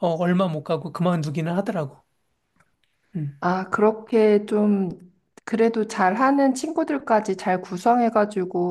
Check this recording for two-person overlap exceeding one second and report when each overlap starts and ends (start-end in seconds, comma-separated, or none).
none